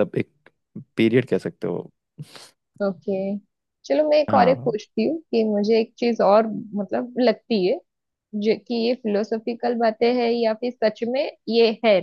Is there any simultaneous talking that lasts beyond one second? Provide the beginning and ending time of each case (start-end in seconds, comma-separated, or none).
none